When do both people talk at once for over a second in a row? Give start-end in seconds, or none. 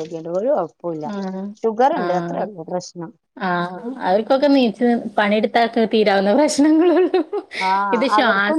none